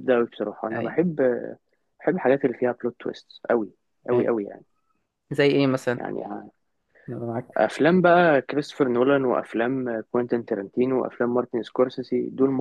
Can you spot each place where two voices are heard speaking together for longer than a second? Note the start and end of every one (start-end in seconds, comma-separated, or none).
none